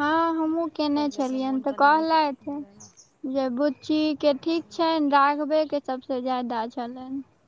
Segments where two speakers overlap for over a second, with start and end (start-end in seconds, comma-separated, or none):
0.9-2.9